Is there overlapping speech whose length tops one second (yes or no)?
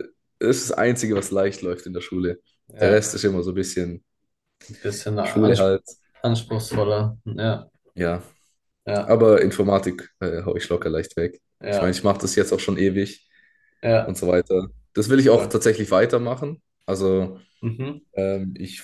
no